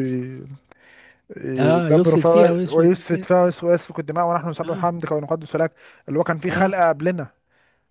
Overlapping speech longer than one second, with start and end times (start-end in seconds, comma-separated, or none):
1.6-3.3